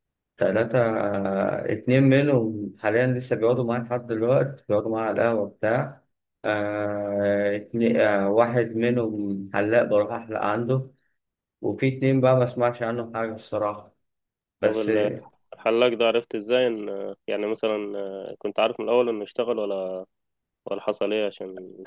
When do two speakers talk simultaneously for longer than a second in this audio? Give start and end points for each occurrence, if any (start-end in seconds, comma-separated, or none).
none